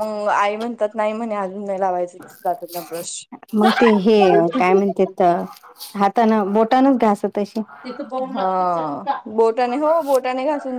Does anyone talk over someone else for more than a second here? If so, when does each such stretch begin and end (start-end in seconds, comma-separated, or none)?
none